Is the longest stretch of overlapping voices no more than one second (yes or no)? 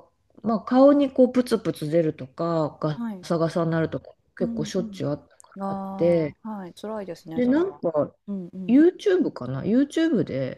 no